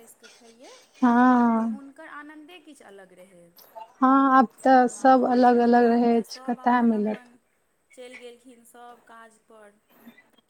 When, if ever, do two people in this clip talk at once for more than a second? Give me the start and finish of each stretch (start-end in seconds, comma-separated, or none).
4.9-7.2